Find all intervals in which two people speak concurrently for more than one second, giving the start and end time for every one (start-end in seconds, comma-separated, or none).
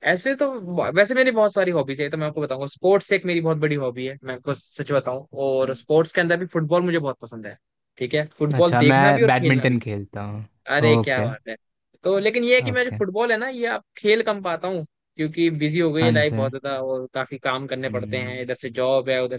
8.5-9.8